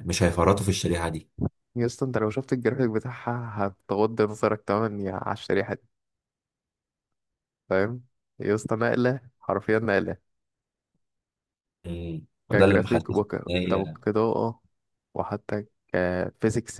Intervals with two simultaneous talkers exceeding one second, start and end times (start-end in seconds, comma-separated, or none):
12.5-13.9